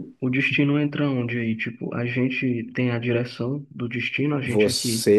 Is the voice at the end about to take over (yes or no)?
yes